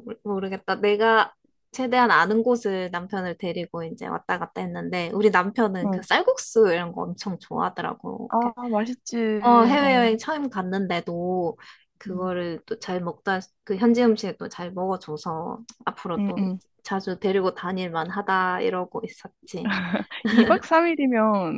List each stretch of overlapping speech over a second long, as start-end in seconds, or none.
none